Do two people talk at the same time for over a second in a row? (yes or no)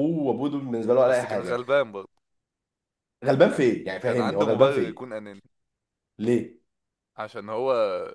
yes